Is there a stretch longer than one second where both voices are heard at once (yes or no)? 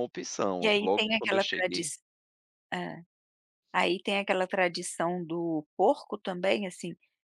yes